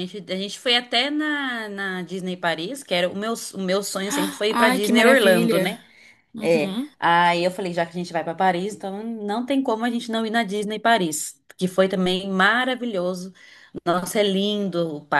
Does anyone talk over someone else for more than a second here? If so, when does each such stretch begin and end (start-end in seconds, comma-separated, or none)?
4.1-5.8